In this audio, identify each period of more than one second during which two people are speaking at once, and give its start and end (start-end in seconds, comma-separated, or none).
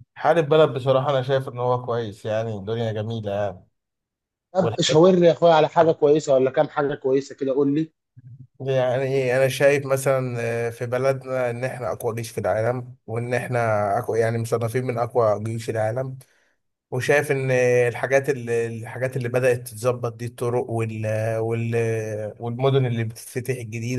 none